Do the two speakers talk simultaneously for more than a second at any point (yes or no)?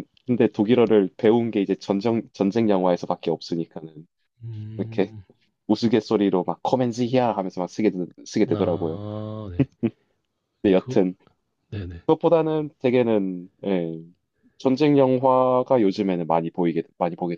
no